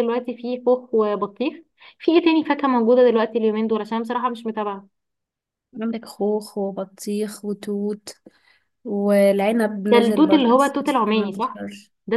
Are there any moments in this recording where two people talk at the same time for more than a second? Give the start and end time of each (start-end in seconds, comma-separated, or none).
9.9-11.6